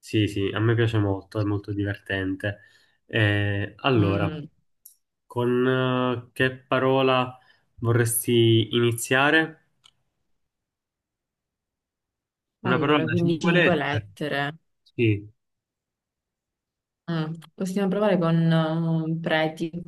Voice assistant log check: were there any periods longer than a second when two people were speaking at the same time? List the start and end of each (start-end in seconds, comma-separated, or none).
12.6-14.1